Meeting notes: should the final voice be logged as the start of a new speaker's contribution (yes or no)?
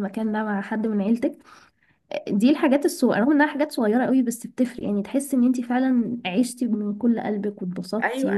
yes